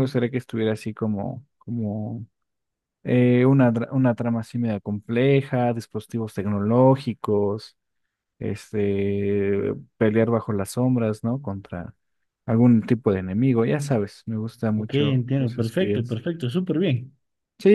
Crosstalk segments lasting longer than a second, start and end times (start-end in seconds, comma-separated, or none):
14.8-16.2